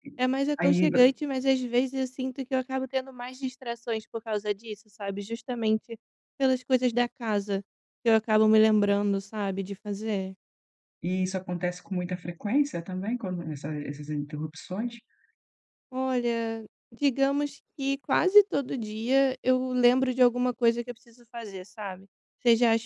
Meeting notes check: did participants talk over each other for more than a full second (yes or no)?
no